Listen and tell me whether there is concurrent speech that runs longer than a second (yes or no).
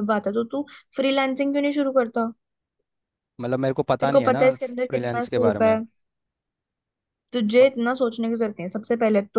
yes